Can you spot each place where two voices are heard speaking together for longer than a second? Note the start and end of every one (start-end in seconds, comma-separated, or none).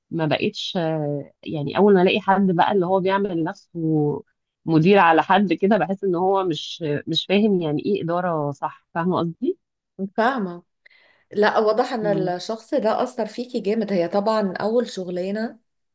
none